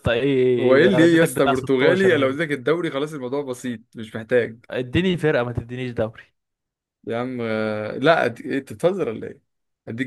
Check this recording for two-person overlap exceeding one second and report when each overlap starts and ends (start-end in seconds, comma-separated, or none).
0.6-2.4